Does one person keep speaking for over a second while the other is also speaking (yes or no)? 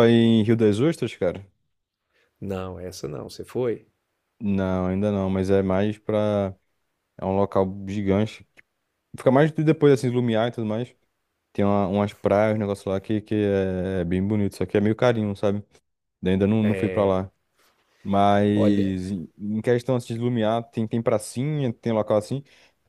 no